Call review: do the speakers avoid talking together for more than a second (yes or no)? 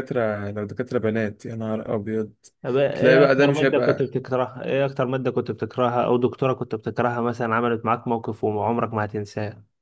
no